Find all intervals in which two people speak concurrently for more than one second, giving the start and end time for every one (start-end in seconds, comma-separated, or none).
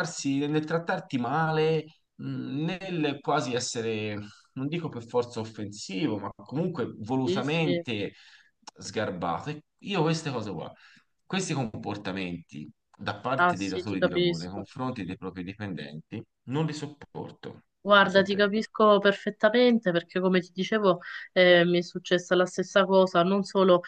13.3-14.7